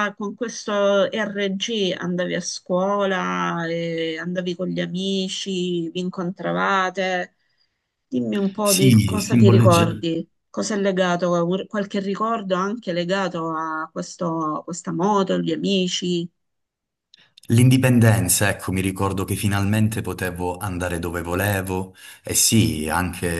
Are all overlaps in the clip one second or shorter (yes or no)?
no